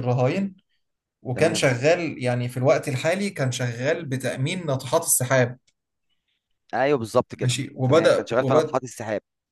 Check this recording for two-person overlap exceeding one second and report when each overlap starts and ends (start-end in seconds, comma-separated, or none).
7.3-8.8